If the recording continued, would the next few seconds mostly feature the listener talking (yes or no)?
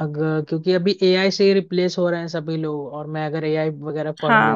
yes